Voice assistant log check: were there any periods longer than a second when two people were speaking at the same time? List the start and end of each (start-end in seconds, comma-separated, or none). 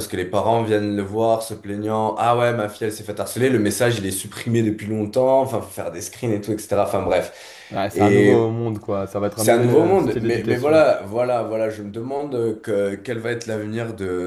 9.3-10.8